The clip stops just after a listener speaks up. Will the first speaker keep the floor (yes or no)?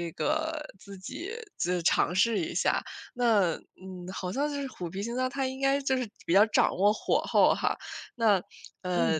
yes